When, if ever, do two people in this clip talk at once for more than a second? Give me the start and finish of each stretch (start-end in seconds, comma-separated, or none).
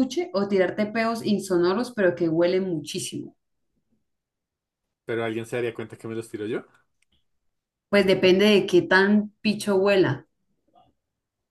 none